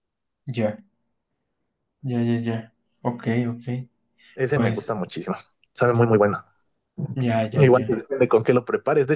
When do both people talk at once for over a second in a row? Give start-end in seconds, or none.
none